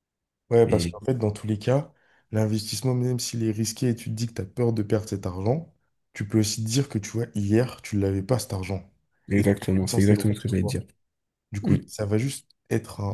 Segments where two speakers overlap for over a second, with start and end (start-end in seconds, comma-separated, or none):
9.4-10.8